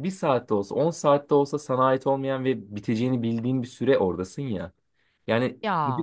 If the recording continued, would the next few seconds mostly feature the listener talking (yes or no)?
no